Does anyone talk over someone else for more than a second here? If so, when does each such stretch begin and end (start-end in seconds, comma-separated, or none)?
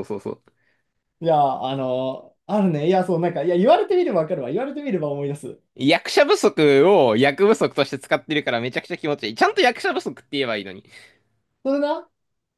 none